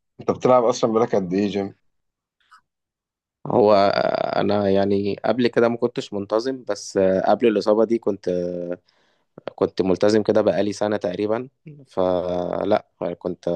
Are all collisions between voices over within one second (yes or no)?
yes